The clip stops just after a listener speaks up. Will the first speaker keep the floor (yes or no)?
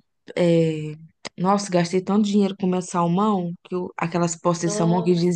yes